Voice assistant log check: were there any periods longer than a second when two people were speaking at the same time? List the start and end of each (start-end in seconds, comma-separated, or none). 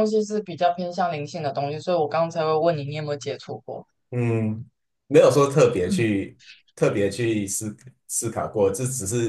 none